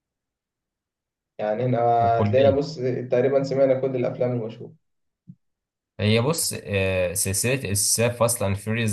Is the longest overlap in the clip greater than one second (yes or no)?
no